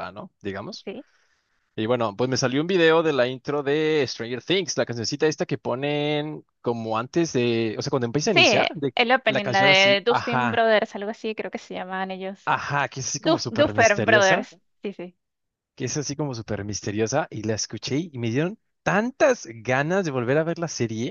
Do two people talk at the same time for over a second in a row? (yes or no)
yes